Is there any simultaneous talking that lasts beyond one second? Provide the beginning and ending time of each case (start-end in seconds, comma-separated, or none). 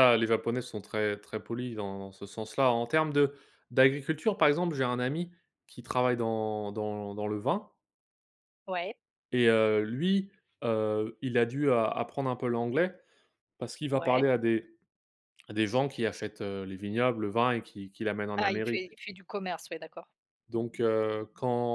none